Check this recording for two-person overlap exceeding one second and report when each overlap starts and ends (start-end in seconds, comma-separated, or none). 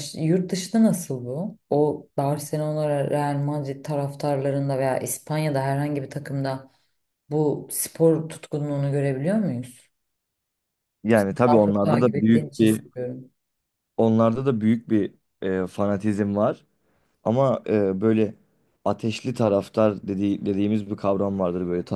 11.5-12.8